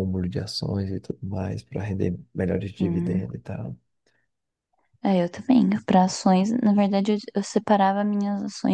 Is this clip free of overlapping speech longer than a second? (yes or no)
yes